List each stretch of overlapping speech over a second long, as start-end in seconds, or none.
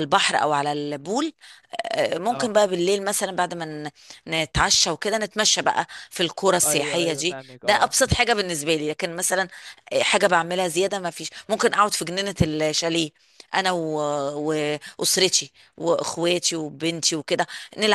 6.7-8.0